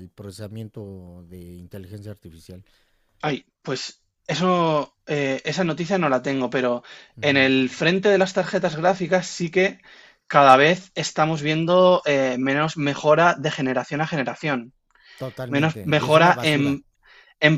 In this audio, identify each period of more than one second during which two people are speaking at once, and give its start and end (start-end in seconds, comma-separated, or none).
15.5-16.8